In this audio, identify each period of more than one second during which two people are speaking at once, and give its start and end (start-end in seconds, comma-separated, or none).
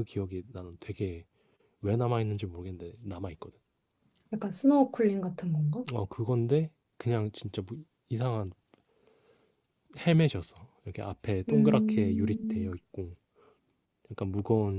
11.5-12.7